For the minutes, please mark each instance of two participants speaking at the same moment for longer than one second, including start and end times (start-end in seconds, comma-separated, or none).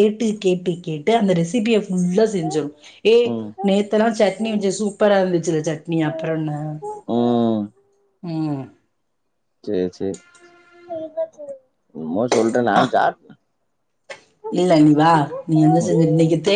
none